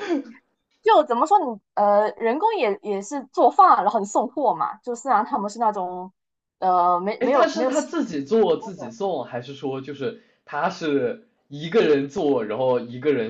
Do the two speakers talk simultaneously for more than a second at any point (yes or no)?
yes